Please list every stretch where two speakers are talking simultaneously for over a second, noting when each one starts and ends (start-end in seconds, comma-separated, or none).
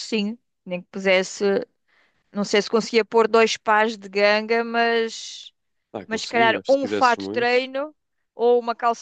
6.1-7.5